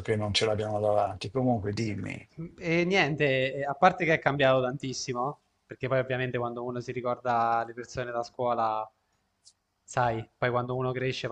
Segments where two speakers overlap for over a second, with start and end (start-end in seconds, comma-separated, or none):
none